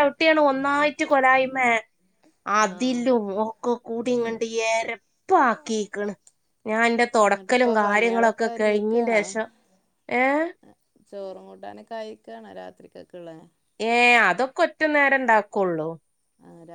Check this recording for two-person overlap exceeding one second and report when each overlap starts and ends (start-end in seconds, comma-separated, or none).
7.2-9.2